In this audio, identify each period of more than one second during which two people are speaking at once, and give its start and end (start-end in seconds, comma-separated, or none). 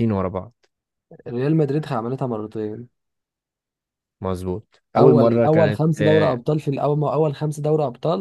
5.0-6.4